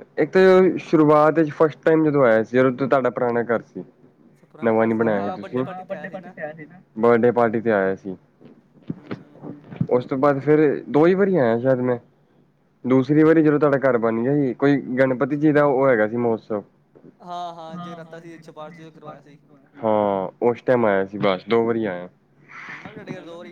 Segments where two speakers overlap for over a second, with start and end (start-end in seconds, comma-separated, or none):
4.6-6.1